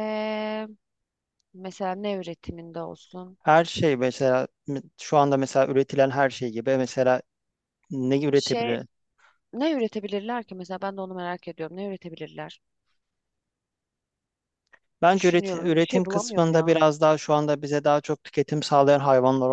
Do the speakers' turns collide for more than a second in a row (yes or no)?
yes